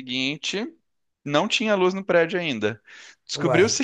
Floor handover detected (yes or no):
no